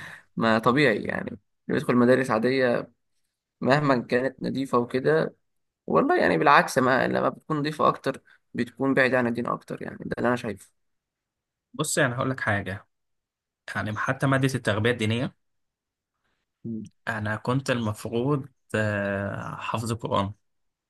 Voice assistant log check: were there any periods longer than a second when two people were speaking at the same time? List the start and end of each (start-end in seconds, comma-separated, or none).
none